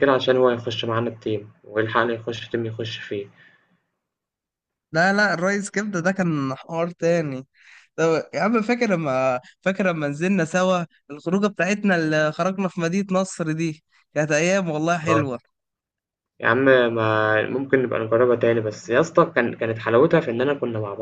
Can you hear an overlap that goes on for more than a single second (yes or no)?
no